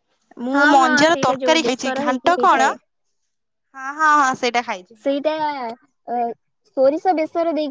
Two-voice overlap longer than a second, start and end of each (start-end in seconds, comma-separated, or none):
0.5-2.7